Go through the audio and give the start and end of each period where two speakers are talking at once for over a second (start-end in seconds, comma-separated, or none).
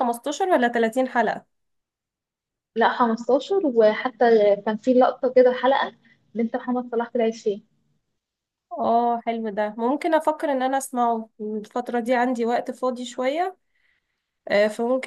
none